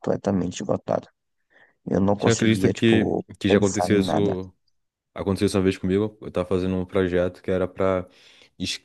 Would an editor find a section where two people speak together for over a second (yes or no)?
yes